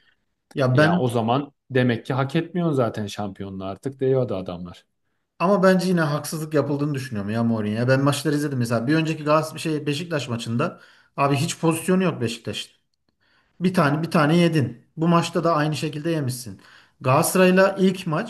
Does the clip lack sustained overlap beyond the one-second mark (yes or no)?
yes